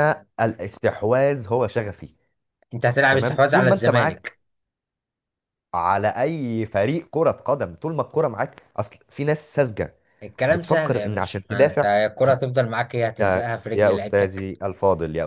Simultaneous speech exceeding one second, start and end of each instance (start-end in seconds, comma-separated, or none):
3.1-4.4, 10.5-11.9, 13.2-14.5